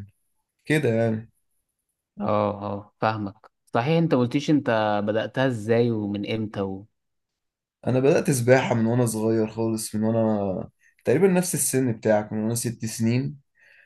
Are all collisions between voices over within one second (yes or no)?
yes